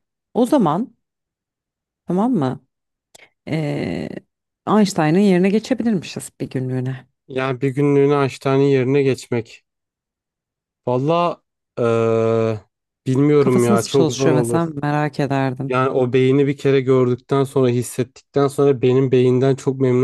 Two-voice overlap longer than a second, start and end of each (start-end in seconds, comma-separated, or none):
13.4-14.6